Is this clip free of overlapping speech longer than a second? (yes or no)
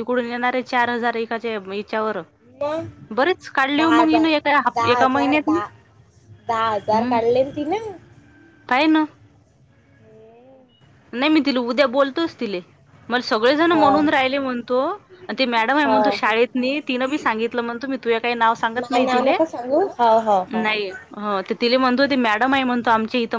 no